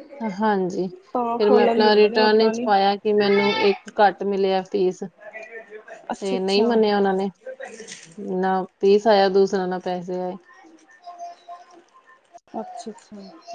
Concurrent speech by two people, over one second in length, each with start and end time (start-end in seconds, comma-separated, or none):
1.1-2.7